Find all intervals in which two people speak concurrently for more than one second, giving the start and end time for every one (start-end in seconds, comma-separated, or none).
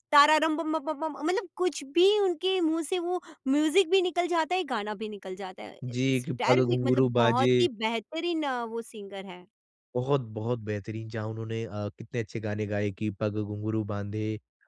5.8-7.5